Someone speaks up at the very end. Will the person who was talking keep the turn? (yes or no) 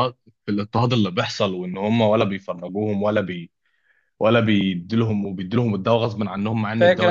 no